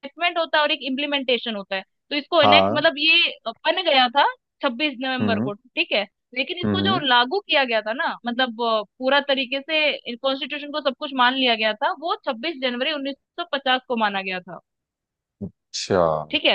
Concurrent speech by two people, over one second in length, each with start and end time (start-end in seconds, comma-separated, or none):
none